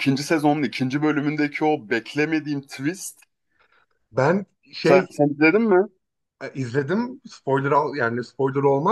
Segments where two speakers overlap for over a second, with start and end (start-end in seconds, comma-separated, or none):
none